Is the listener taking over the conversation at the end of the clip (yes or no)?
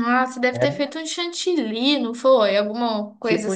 yes